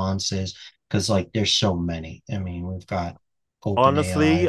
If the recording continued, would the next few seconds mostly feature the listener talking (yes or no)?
yes